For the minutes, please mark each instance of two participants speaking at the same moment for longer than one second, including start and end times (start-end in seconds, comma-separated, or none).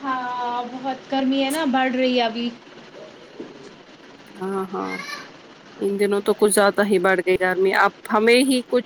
none